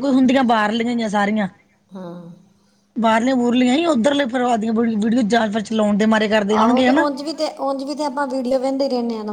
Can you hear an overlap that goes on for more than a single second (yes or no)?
no